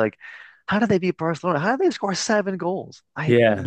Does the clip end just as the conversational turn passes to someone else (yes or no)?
yes